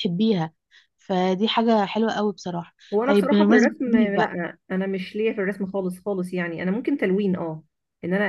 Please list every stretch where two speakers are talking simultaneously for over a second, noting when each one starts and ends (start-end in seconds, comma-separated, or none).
2.9-4.3